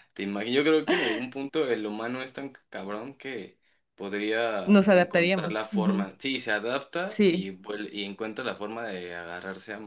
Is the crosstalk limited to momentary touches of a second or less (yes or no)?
no